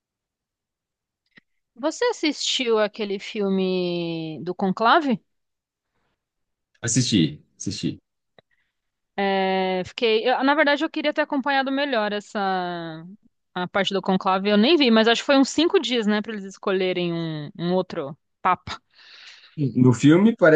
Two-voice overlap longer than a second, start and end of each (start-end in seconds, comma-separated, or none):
none